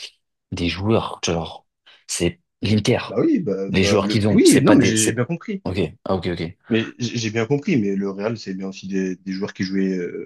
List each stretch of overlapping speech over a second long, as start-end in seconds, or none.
3.7-5.2